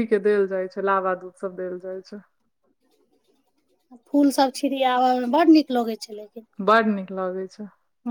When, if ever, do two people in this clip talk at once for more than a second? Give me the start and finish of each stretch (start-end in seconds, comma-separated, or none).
none